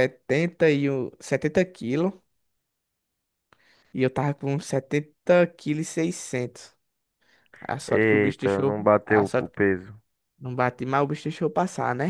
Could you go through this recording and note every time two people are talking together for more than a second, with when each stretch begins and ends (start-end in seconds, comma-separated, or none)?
7.9-9.7